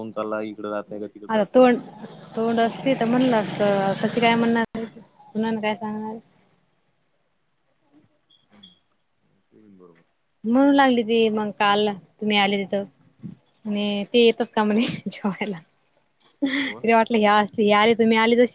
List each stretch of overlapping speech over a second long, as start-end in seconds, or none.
none